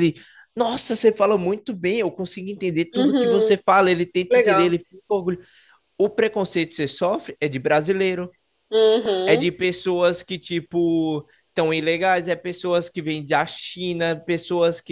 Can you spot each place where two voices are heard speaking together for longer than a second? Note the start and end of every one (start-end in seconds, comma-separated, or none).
none